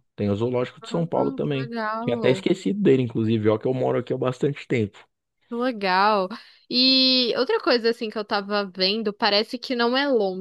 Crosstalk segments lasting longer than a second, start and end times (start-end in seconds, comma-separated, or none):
0.8-2.4